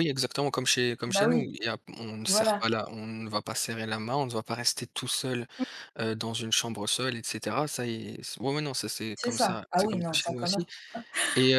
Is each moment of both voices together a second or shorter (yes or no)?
no